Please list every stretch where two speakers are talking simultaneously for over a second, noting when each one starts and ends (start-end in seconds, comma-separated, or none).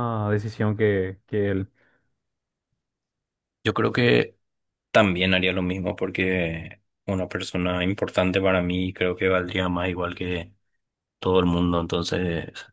none